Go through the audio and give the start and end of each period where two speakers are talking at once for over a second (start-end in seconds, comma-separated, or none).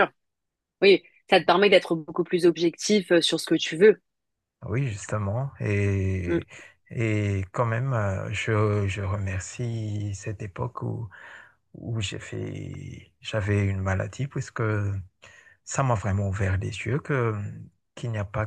none